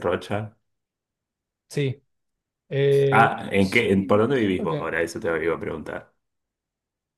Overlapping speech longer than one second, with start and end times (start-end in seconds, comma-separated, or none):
3.2-4.9